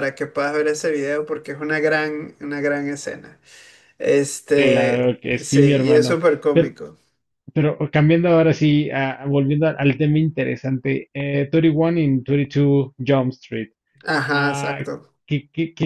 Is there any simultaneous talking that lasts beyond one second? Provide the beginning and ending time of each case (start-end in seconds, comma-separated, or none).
4.5-6.8